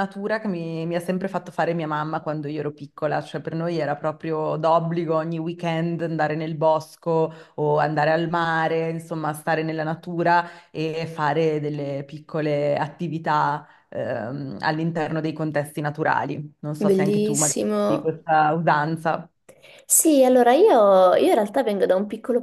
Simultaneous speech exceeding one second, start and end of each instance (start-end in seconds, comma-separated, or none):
16.9-18.1